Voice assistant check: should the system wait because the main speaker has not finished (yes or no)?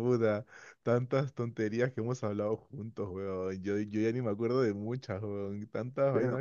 no